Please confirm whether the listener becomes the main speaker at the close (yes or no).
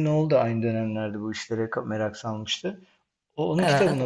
no